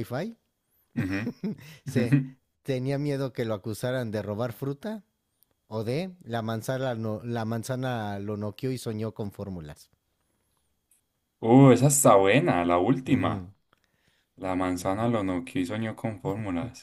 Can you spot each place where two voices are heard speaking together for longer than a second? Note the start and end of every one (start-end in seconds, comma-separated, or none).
none